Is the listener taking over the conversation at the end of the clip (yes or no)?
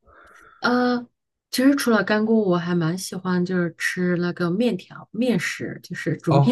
yes